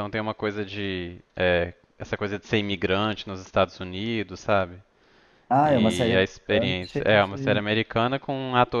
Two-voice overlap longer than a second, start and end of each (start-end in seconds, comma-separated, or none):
5.6-7.6